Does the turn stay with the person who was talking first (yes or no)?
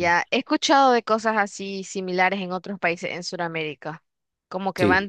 yes